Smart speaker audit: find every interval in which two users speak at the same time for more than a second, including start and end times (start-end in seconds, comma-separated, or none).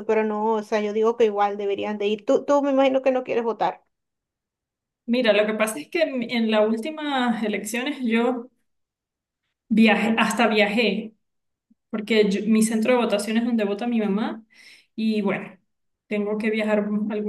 none